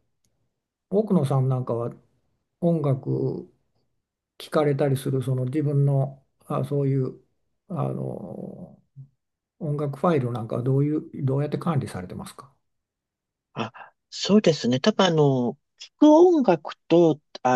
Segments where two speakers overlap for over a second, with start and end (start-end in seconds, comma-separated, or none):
none